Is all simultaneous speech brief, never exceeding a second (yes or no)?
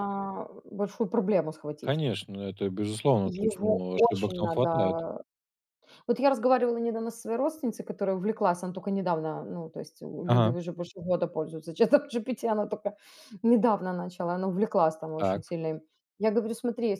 no